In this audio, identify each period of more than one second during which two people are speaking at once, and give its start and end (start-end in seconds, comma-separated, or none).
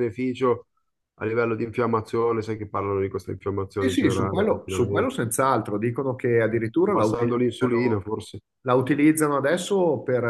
3.8-5.2, 6.3-8.0